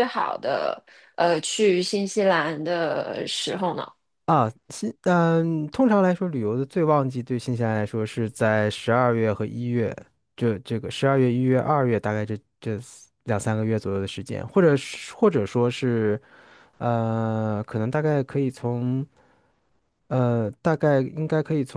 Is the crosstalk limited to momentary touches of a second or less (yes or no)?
yes